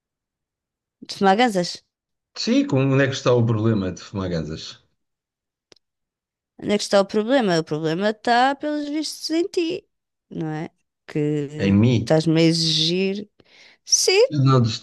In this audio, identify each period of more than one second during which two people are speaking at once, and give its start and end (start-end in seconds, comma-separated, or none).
none